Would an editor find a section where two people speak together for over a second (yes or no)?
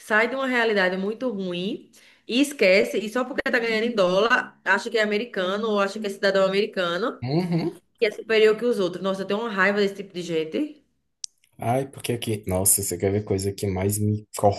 no